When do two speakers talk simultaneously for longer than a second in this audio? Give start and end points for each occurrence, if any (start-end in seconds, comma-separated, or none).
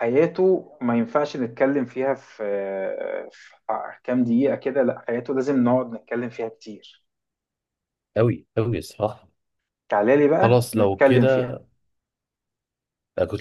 10.4-11.6